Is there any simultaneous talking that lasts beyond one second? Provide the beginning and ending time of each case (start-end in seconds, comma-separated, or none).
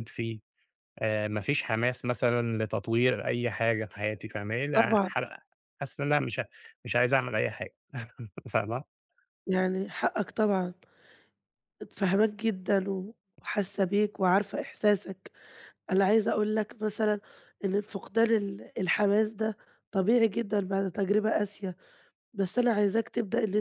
none